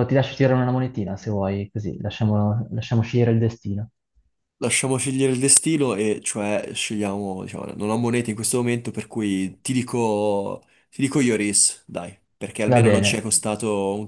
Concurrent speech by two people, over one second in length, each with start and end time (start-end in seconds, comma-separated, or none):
none